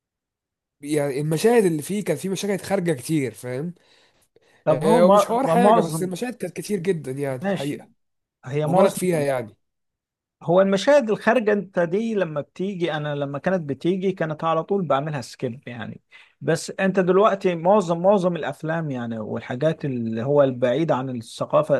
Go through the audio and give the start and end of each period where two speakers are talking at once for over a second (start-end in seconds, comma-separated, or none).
4.7-6.1